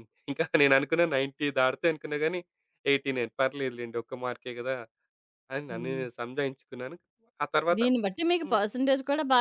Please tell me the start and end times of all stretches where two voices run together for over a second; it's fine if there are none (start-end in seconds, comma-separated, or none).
none